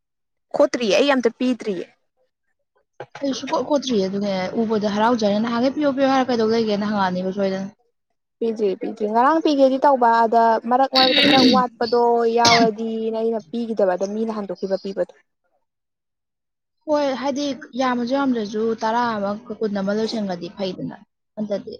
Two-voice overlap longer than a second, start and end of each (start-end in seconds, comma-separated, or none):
none